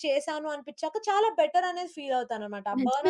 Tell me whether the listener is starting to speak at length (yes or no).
yes